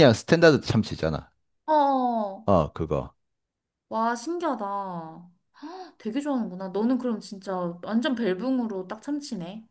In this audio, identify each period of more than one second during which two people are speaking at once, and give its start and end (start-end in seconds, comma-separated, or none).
none